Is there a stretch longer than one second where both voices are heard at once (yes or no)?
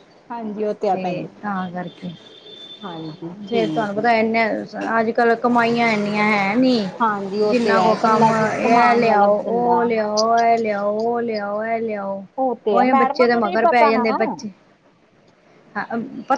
yes